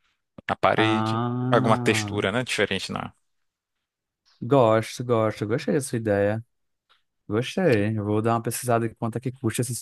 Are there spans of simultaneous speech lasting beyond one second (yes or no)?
yes